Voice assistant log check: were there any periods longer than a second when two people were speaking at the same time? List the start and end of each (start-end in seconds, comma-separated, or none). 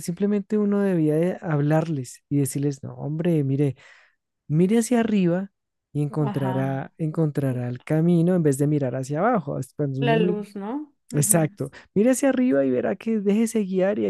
none